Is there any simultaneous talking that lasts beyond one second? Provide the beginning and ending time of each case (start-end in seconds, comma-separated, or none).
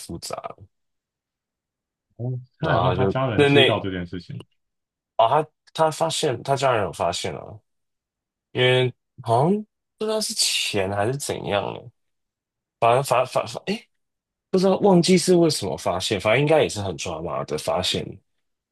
2.6-3.8